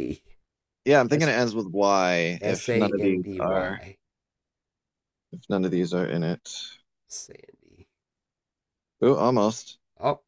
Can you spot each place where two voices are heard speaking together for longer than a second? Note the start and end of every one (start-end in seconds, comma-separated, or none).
2.5-3.8